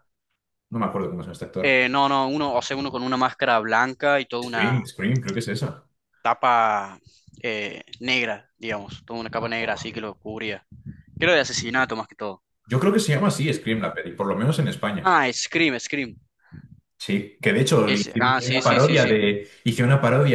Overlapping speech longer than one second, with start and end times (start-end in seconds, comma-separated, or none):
17.8-19.2